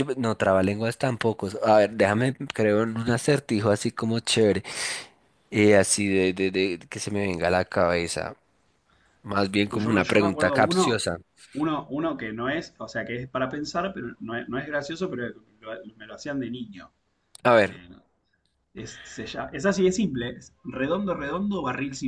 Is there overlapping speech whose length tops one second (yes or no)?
yes